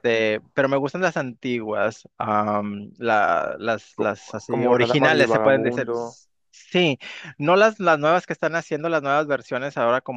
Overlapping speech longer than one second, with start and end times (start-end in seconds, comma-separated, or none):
3.9-6.2